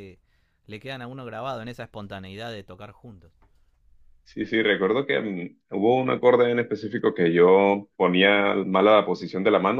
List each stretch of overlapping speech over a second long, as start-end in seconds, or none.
none